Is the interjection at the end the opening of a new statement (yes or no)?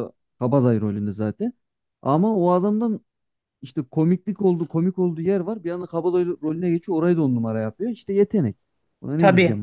yes